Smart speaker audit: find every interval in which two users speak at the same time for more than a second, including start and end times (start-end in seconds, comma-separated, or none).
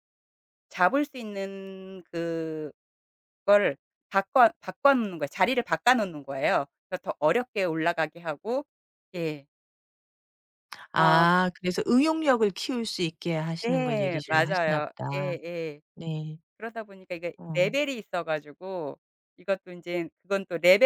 13.6-15.3